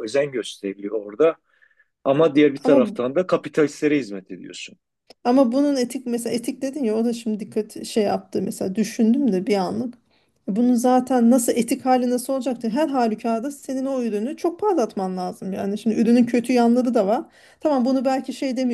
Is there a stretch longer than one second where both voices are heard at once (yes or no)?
no